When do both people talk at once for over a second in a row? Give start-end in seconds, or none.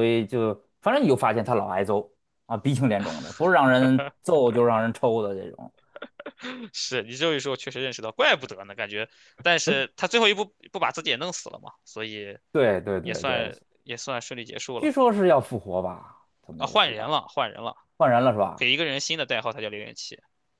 none